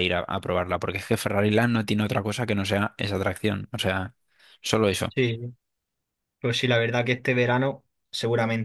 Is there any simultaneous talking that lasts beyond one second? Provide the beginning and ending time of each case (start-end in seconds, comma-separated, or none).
none